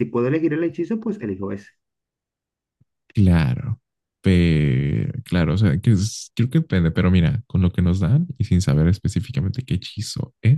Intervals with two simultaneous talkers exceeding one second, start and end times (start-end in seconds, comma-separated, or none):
none